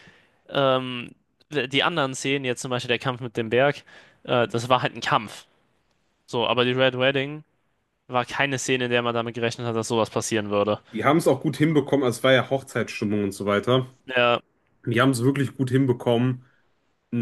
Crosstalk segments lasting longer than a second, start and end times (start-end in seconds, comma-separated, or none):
none